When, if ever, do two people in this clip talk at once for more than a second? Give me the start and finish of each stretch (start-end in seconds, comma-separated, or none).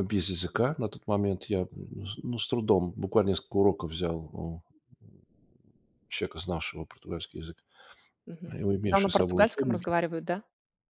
8.5-9.9